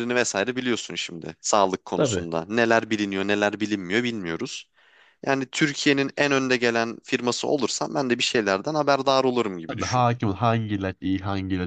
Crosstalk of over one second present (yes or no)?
no